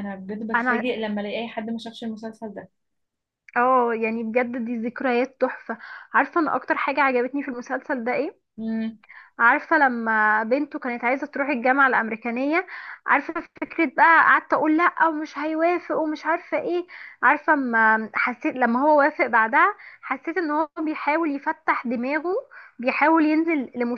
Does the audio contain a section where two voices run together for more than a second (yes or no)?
no